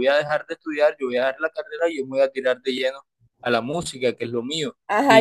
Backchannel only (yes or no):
no